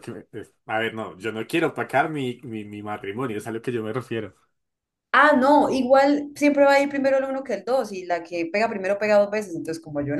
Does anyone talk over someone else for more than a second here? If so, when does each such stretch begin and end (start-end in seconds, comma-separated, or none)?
none